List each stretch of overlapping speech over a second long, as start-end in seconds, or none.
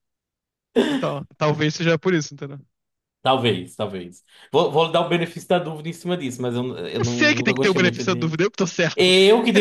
7.0-8.3